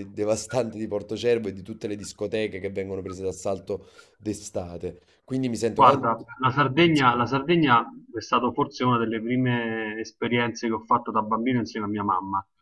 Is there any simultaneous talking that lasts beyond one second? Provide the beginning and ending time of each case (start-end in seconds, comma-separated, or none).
none